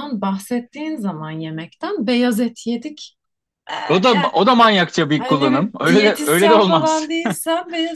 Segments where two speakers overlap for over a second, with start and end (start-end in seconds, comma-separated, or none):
5.2-7.1